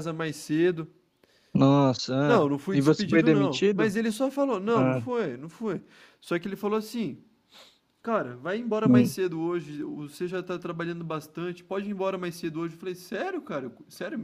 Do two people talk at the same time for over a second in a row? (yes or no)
yes